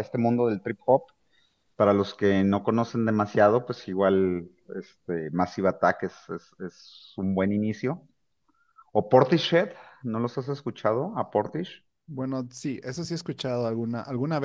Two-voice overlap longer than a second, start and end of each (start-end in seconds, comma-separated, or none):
none